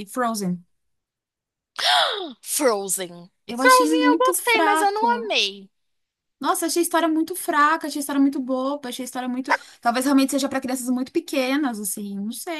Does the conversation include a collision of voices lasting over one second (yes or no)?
yes